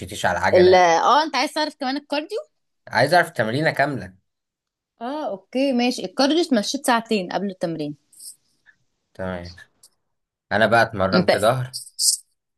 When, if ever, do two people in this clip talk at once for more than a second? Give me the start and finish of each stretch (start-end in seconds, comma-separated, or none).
none